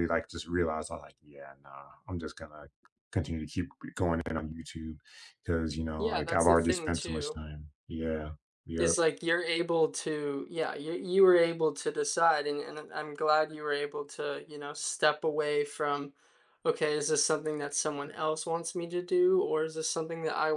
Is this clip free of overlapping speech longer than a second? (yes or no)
no